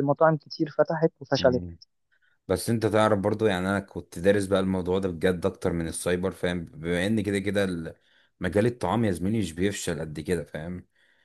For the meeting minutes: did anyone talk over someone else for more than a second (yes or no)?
no